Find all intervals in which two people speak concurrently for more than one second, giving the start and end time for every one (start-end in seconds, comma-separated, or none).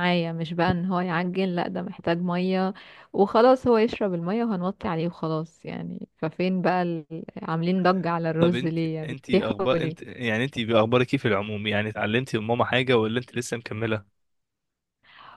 8.4-10.1